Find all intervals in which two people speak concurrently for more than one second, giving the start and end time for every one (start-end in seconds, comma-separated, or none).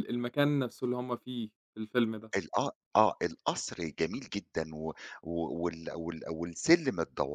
none